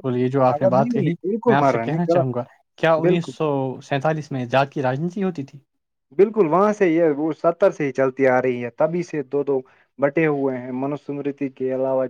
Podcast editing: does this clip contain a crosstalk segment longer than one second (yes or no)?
yes